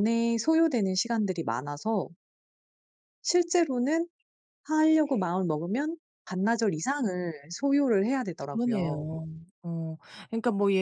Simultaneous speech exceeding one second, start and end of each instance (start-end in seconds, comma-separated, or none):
none